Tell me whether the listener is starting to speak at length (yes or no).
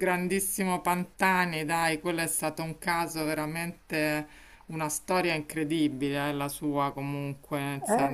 yes